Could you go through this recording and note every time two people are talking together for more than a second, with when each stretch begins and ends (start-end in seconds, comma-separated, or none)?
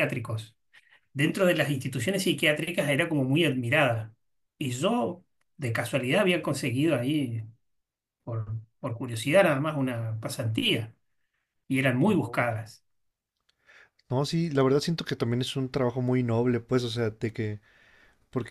none